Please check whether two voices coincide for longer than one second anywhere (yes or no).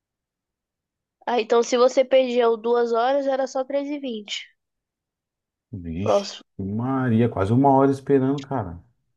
no